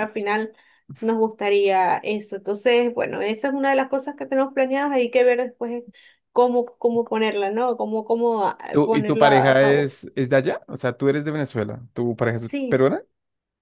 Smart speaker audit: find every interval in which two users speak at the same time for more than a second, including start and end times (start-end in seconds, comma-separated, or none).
8.7-9.9